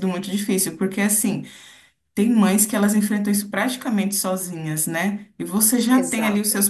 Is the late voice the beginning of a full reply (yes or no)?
no